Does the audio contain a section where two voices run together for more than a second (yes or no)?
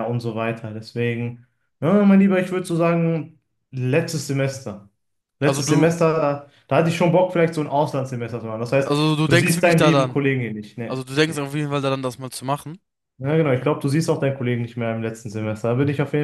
yes